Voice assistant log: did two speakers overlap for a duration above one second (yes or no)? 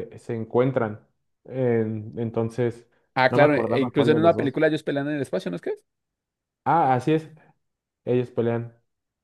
yes